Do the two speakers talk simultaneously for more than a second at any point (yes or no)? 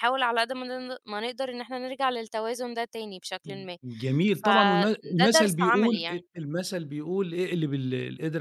yes